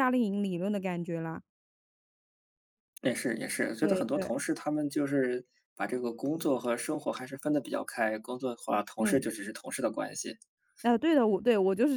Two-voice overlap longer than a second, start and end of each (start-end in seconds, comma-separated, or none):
none